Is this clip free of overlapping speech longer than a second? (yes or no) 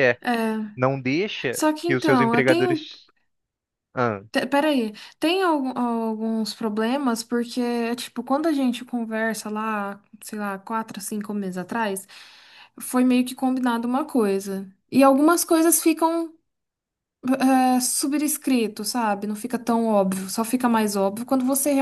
no